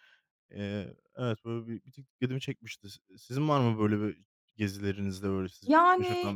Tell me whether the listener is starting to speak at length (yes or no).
yes